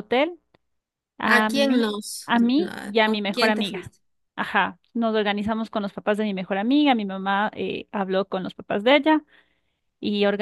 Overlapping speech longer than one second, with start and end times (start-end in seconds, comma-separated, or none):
1.2-3.9